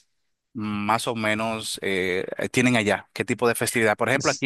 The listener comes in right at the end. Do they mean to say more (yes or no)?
no